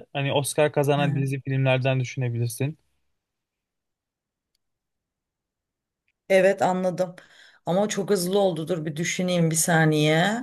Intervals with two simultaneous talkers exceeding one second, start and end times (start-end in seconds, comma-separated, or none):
none